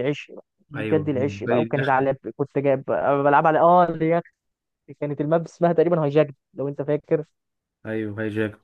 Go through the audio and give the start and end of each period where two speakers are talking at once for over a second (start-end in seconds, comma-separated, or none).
0.8-2.0